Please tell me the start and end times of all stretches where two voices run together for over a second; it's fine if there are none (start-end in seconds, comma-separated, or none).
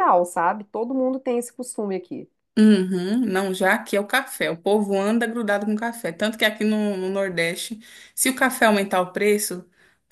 none